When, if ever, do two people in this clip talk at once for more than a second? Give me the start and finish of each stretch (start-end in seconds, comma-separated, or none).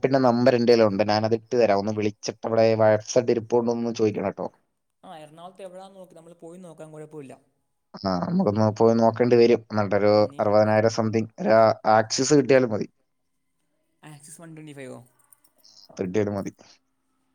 none